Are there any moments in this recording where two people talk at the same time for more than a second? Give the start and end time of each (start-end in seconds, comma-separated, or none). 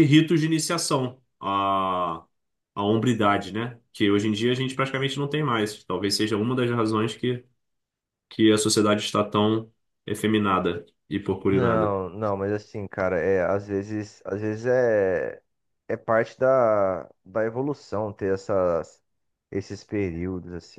none